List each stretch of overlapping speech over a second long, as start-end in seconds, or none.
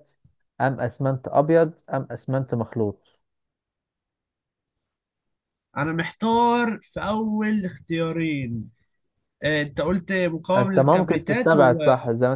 10.6-11.8